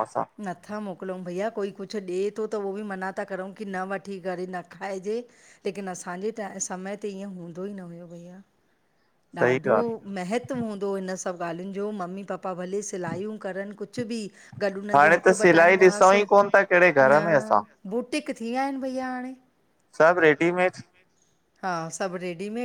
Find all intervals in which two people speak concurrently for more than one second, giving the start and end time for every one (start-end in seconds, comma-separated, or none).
15.0-17.2